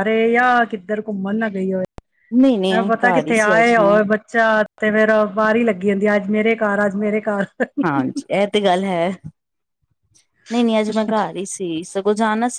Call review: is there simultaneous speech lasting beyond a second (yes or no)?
yes